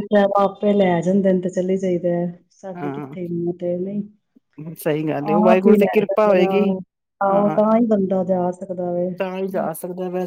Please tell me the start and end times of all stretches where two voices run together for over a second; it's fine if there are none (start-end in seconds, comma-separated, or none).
5.2-6.7